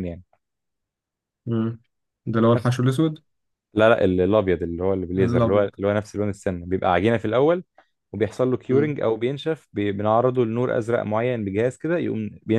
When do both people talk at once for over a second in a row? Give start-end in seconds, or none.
none